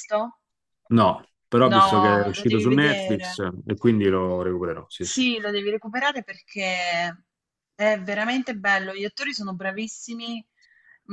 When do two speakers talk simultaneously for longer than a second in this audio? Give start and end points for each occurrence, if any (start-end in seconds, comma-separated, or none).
1.6-3.4